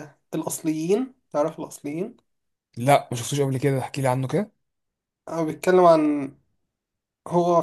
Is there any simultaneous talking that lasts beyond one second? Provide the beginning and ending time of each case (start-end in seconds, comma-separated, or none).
none